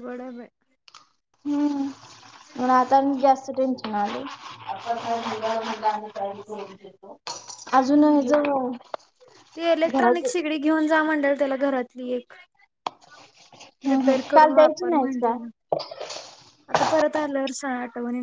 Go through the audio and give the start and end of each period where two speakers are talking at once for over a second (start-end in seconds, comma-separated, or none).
13.9-15.3